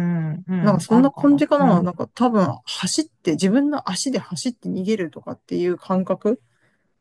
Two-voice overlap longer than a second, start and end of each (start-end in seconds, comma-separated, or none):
0.6-1.9